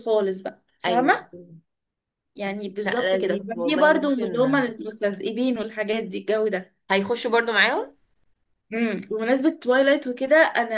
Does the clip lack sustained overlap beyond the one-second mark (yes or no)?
no